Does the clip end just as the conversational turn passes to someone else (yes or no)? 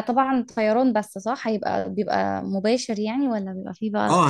yes